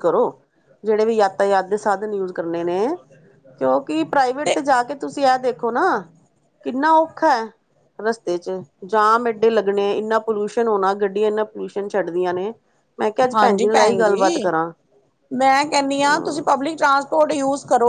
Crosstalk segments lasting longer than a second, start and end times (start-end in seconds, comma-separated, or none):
none